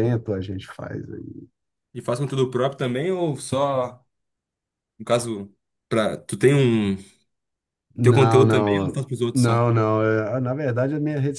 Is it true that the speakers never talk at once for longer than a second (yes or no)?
no